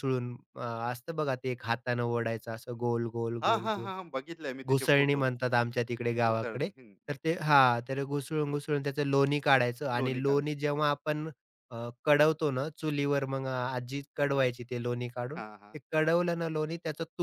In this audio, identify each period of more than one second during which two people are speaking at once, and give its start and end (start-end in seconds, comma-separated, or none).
none